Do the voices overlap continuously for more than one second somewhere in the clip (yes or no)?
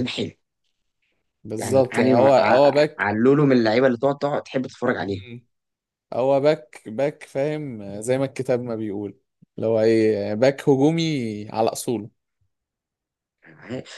yes